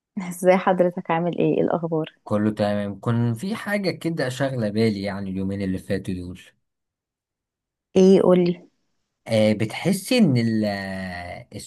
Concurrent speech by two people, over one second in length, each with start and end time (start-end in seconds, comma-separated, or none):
none